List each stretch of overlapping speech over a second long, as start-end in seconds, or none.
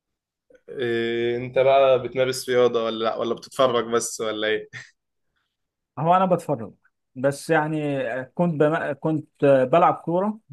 none